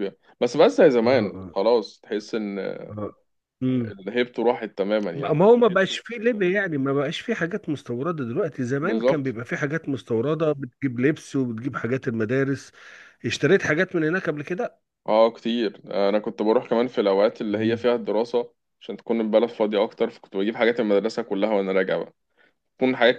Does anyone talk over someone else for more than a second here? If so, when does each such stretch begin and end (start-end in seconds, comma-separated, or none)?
none